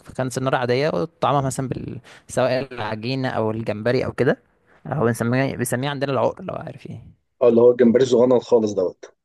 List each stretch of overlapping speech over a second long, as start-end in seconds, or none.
none